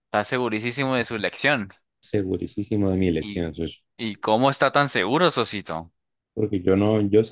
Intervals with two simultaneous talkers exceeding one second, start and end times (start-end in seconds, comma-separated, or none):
none